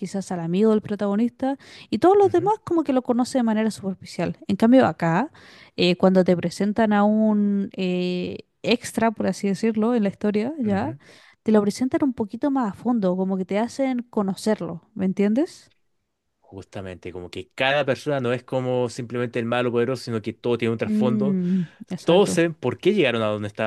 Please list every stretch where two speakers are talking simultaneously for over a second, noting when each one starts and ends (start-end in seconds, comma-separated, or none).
none